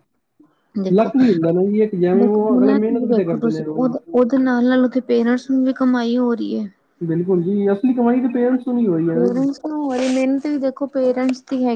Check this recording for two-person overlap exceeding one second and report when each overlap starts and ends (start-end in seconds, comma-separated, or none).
2.2-3.9